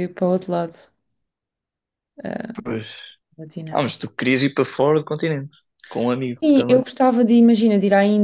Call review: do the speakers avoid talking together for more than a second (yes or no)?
yes